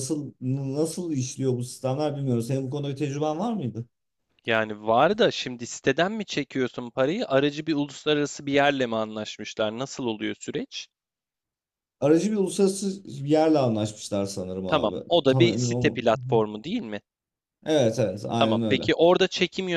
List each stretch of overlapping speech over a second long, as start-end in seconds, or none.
14.7-16.4